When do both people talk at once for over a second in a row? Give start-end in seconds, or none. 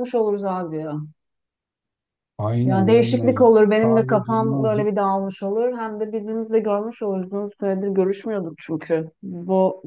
2.6-4.9